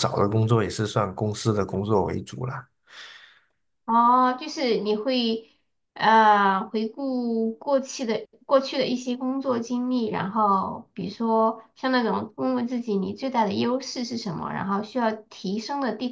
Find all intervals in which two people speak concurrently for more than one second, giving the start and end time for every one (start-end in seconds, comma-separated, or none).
none